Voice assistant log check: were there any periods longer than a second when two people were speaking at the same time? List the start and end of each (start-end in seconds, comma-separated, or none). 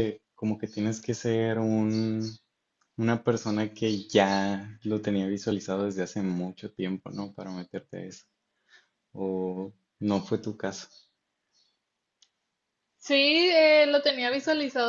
none